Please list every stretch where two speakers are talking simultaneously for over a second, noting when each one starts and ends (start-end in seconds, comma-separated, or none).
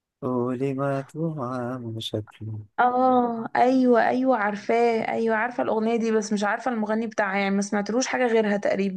none